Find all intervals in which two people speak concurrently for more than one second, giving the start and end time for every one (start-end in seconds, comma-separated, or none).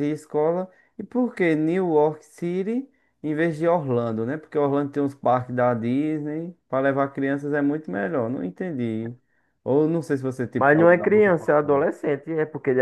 10.6-11.9